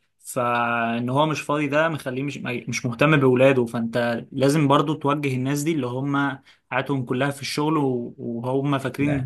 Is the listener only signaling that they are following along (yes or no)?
yes